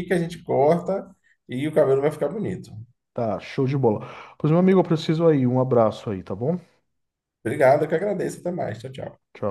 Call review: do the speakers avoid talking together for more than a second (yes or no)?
yes